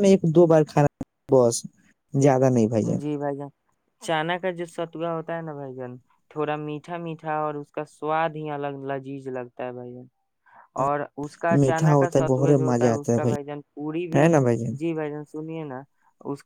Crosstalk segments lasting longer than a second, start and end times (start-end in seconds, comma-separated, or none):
11.6-13.1